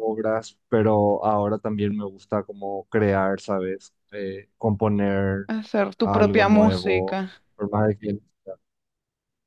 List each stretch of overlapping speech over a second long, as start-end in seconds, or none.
6.0-7.2